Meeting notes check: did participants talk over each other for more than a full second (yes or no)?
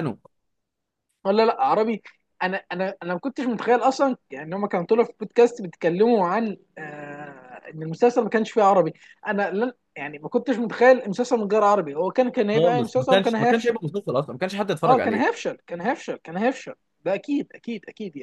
yes